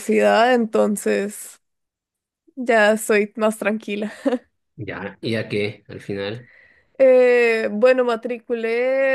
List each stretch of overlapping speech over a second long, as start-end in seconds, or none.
none